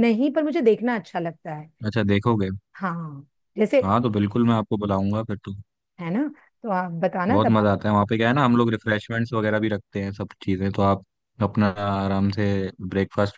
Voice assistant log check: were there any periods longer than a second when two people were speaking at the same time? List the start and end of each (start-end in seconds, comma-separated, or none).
none